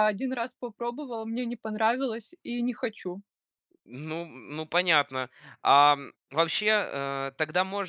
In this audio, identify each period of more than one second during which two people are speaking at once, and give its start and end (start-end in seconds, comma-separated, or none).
none